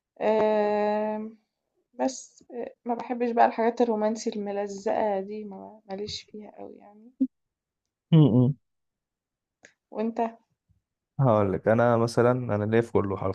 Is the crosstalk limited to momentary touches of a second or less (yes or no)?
yes